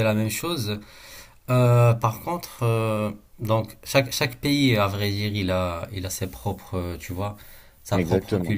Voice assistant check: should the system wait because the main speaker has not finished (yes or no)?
yes